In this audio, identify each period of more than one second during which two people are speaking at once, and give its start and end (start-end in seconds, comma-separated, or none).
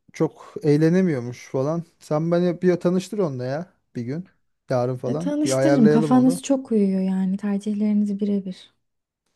5.0-6.4